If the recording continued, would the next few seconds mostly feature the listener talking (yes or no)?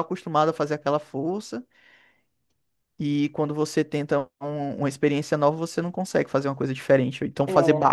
no